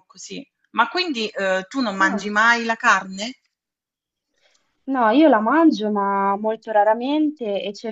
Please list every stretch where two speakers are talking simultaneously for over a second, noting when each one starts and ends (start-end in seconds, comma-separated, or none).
none